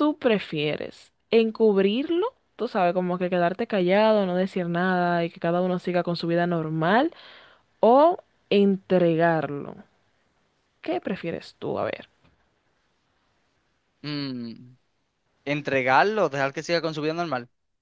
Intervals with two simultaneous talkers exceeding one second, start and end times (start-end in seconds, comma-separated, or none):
none